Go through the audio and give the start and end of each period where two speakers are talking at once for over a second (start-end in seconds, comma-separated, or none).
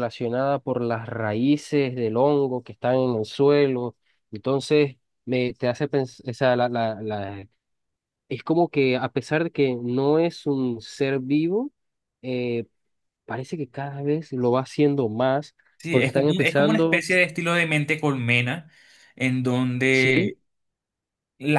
15.8-17.1